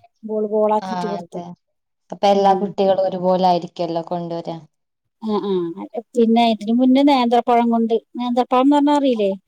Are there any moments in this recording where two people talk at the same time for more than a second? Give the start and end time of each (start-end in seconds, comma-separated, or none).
none